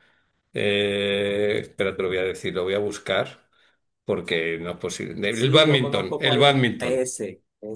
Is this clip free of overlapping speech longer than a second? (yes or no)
no